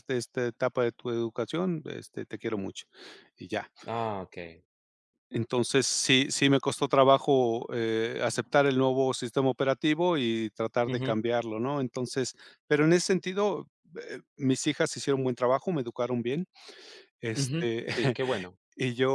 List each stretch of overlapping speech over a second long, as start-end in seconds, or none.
none